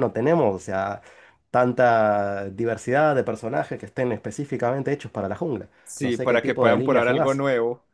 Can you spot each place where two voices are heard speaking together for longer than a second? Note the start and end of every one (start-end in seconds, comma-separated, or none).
5.8-7.4